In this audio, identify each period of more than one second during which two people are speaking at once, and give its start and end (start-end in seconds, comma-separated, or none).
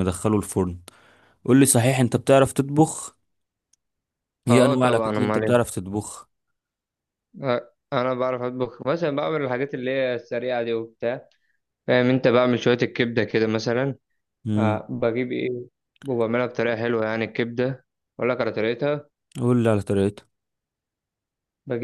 4.5-5.7